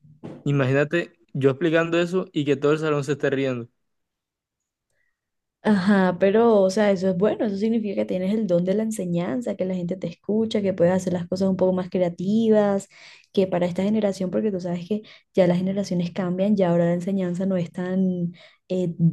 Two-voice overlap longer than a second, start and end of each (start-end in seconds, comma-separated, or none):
none